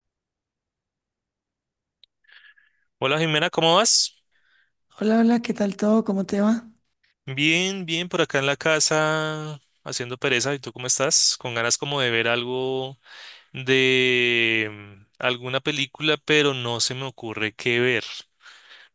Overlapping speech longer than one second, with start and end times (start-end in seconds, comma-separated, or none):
none